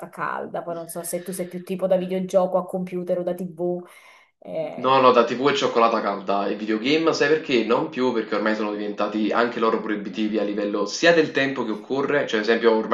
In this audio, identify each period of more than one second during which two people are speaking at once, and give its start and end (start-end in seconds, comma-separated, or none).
none